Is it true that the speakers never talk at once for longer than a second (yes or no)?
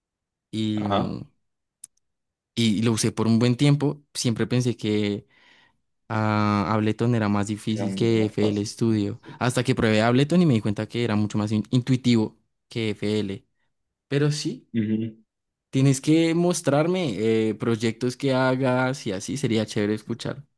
no